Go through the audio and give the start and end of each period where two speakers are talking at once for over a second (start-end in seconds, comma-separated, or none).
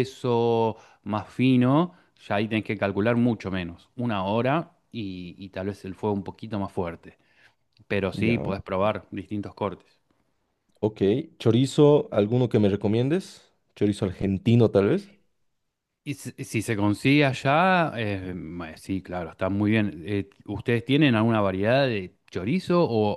none